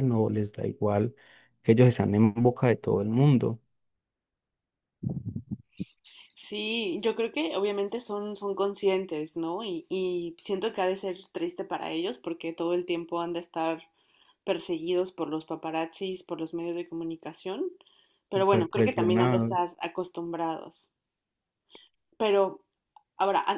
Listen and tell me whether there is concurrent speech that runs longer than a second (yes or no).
yes